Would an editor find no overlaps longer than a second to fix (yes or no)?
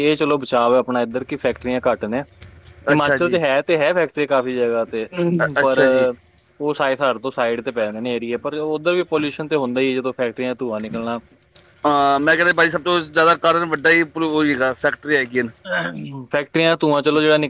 yes